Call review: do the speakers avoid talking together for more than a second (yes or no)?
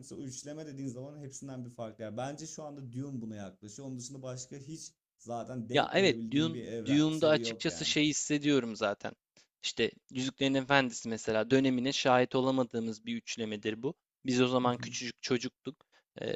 no